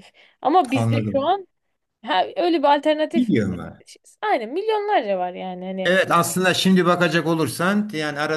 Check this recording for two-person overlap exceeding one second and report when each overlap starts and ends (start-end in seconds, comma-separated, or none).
none